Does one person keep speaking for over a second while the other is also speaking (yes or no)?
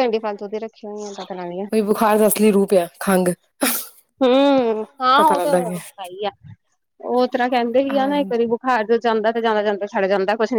no